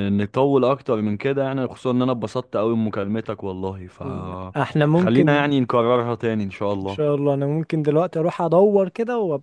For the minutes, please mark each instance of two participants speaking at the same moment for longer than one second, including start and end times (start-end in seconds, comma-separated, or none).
4.0-5.5